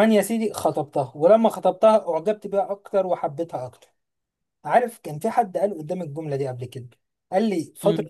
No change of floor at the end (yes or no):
yes